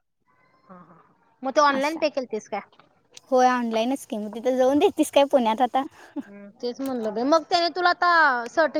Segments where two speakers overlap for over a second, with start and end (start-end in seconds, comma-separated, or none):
none